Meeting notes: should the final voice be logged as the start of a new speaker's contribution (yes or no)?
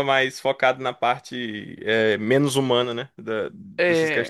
yes